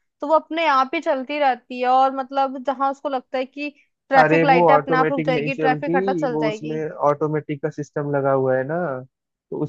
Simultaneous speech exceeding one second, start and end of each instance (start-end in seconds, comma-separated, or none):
4.2-6.8